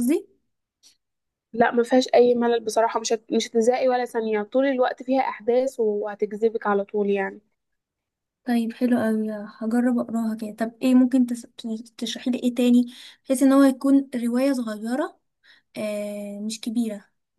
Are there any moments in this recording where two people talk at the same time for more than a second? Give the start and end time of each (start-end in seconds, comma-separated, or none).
none